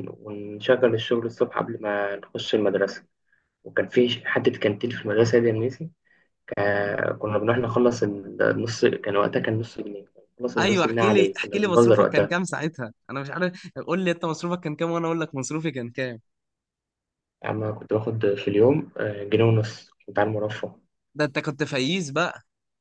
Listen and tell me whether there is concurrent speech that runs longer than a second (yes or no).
yes